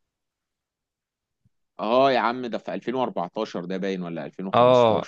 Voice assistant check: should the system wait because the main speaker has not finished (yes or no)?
no